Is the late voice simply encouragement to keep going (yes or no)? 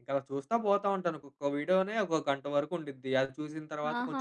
no